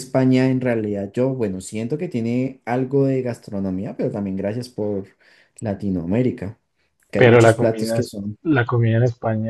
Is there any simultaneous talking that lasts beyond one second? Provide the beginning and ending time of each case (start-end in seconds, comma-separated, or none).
7.2-8.4